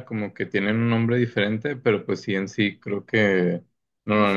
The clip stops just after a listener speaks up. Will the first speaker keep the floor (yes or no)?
yes